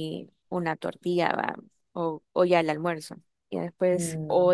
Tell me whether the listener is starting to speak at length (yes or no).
no